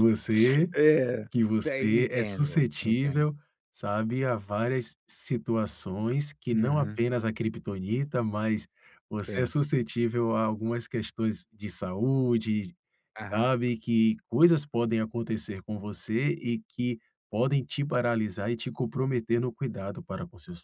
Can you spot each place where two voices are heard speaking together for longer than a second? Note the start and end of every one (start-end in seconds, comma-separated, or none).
1.3-3.3